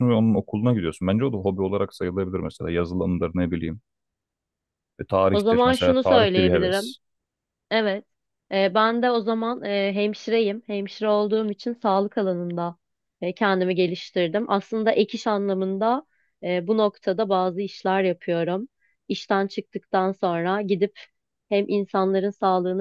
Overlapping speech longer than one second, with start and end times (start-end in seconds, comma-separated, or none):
5.3-6.9